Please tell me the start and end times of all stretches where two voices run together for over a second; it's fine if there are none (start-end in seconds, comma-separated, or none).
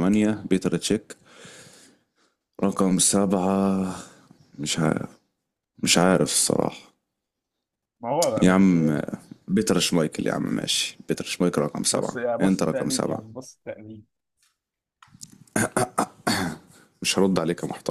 11.9-13.3